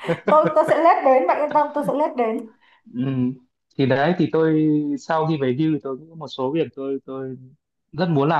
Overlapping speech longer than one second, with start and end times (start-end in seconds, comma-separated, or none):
none